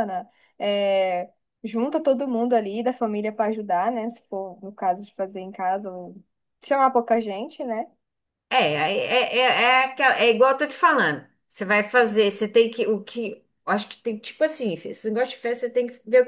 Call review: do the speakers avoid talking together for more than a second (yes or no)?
yes